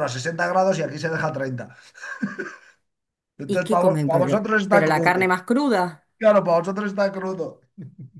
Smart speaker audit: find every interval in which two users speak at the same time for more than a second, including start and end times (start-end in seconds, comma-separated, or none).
3.5-5.3